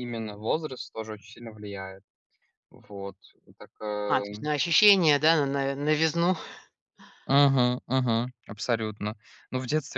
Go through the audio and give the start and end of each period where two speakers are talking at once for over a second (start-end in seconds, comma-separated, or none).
none